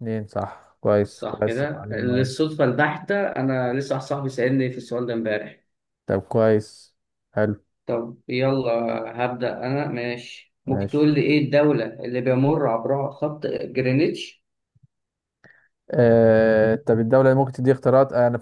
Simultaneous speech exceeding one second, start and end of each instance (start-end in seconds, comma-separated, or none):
1.1-2.3